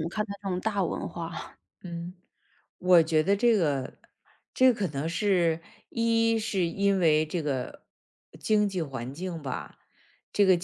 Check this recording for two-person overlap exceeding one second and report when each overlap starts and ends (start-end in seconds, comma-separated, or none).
none